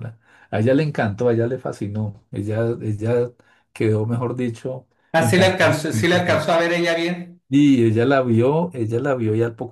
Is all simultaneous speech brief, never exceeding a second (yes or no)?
no